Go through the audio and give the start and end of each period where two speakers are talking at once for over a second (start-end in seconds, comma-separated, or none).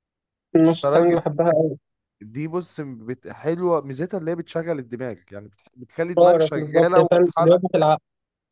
6.2-7.6